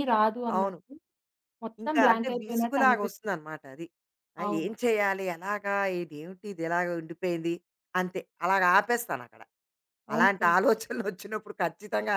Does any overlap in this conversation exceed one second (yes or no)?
yes